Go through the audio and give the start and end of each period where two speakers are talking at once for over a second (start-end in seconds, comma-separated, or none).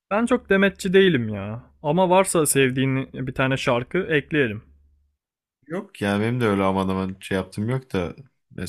none